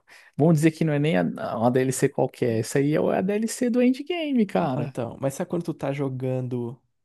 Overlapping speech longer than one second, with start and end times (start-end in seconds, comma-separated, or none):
none